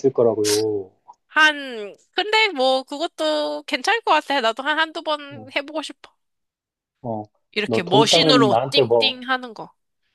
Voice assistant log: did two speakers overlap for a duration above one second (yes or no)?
yes